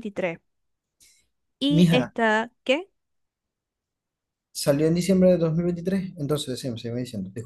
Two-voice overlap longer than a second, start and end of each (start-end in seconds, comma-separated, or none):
none